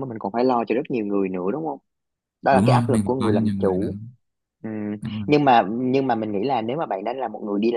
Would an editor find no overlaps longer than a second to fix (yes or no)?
no